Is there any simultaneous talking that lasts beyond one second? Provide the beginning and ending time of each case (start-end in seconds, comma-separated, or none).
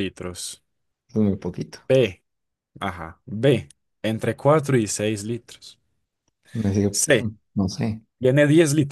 none